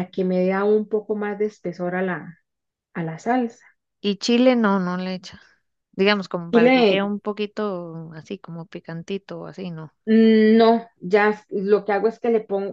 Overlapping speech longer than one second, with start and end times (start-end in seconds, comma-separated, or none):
none